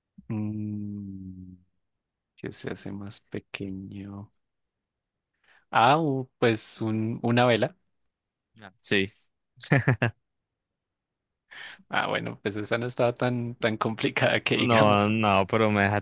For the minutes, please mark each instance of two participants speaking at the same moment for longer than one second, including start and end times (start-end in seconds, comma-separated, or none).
none